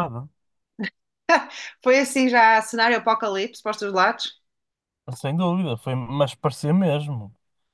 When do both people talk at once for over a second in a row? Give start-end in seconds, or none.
none